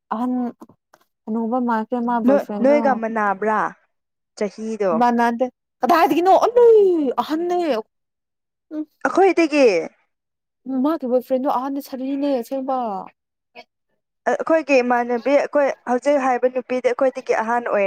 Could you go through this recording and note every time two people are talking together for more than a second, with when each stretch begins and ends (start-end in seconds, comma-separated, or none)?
none